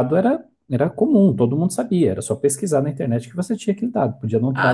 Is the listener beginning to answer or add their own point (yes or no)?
yes